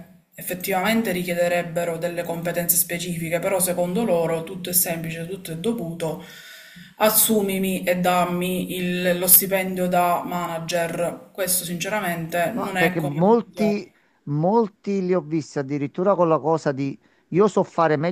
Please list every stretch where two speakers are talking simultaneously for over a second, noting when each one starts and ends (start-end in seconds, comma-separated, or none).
12.5-13.8